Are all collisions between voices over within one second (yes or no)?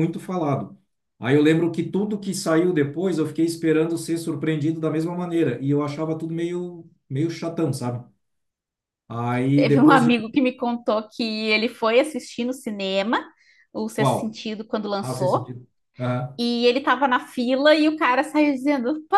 yes